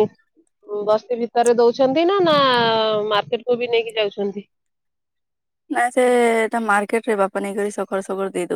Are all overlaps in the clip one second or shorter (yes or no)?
yes